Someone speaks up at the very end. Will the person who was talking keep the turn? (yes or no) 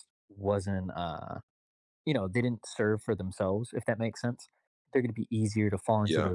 yes